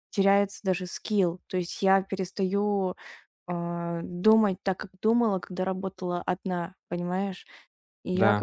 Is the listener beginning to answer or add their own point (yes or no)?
no